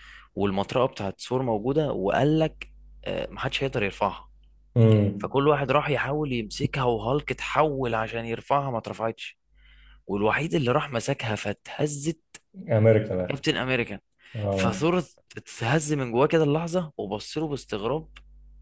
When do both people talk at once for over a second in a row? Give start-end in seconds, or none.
none